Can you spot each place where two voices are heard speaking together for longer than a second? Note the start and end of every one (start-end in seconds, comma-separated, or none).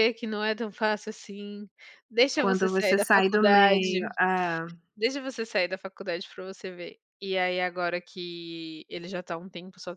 2.4-4.0